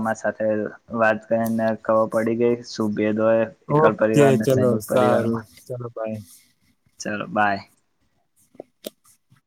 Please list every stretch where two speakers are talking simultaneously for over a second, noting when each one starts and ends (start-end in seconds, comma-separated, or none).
3.8-5.5